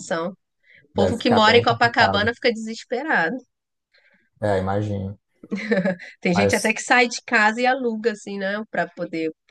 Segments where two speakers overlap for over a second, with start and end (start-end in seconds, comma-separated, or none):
0.9-2.3